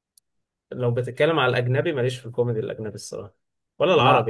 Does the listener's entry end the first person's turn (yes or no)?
no